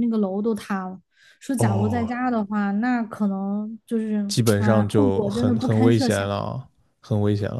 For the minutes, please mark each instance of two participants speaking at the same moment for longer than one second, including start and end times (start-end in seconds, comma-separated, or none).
4.6-6.3